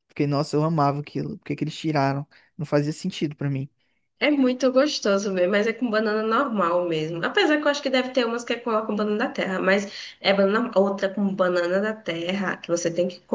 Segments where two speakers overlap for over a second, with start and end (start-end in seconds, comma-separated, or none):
none